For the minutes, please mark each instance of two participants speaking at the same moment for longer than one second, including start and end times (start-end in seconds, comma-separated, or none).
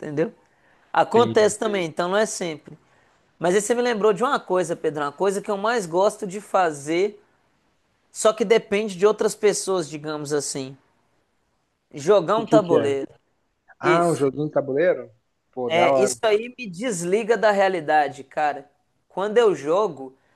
none